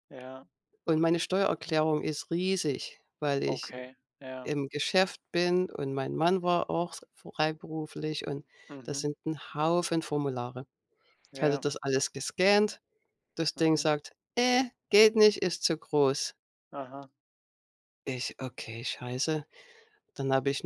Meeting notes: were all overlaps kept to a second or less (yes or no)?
yes